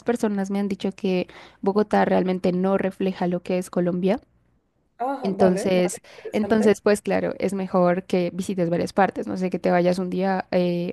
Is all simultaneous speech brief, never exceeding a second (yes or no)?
no